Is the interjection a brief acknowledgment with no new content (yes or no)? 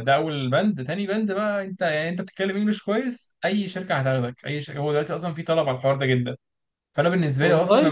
yes